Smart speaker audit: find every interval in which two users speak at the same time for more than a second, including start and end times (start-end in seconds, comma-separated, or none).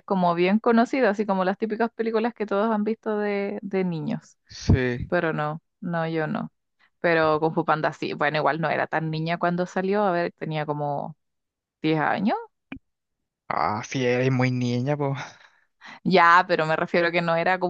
none